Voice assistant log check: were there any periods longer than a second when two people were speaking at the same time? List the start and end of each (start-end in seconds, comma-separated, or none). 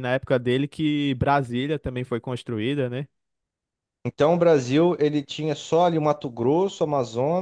none